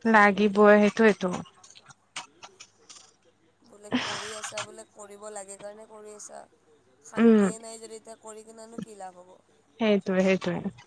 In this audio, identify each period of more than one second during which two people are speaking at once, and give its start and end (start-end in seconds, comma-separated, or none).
none